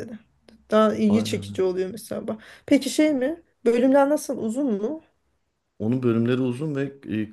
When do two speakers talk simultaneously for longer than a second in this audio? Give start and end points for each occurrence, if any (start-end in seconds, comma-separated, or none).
none